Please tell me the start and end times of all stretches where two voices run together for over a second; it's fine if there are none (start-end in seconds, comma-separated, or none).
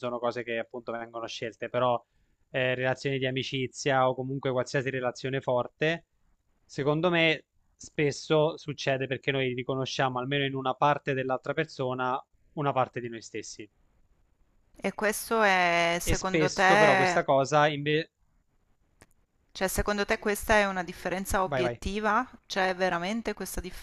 16.0-17.2